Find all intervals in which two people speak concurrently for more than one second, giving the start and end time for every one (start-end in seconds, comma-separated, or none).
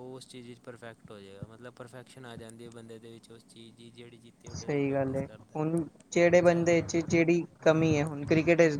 none